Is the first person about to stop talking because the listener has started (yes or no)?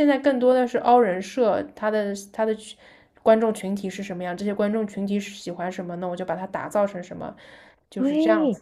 yes